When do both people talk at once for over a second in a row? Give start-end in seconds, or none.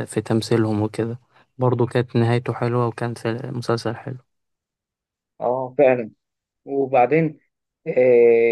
none